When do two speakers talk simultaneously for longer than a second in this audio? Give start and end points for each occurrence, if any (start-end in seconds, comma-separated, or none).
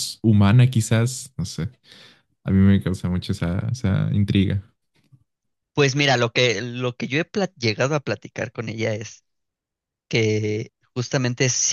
none